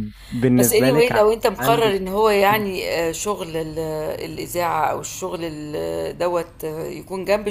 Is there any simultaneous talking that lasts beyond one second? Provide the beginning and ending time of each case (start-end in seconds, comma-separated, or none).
0.6-2.6